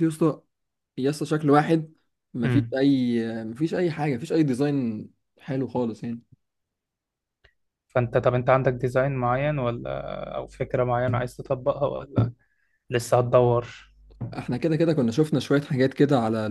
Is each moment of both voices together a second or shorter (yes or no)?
yes